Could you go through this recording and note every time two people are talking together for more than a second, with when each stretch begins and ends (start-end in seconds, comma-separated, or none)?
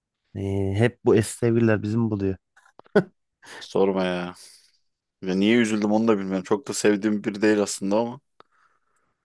none